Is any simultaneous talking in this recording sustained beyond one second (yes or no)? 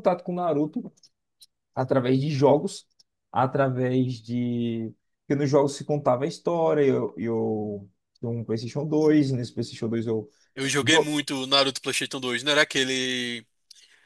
no